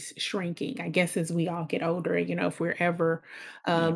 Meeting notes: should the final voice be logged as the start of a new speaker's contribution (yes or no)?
no